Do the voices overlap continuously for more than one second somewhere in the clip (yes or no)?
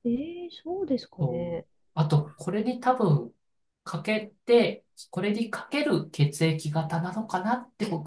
no